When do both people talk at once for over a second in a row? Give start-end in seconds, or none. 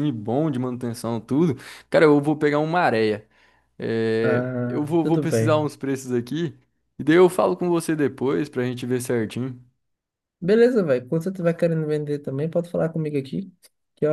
4.2-5.7